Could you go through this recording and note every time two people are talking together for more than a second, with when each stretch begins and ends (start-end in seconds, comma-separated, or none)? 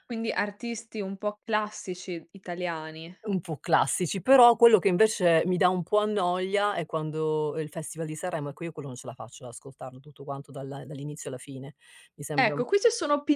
none